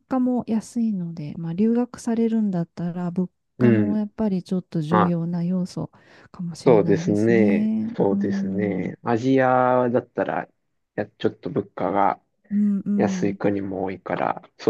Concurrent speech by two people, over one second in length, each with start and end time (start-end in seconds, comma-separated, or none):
6.6-8.9